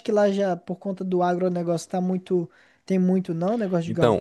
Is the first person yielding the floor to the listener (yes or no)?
yes